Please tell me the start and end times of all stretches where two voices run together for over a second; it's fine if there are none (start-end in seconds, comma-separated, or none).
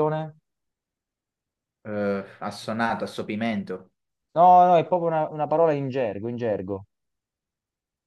none